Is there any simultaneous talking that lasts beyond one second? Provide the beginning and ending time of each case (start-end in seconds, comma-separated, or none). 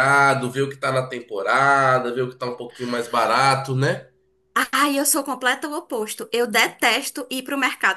none